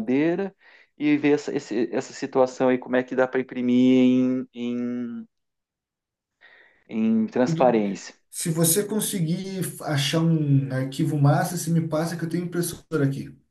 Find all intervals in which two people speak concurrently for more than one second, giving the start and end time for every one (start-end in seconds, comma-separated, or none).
none